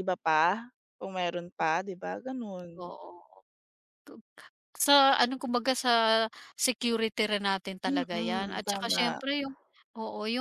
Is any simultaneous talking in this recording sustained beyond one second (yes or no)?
yes